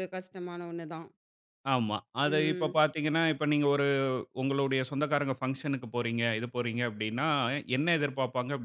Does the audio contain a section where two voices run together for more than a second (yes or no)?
no